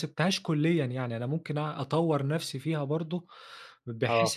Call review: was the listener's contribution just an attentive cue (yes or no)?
yes